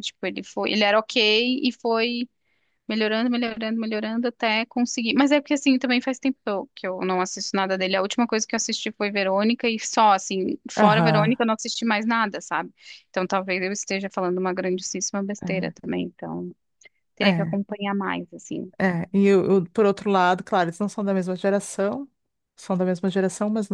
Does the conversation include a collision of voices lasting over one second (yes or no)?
no